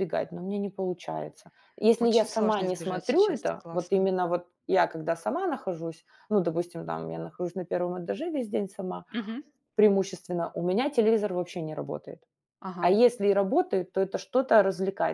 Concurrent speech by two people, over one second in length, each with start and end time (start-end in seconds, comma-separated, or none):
2.0-4.1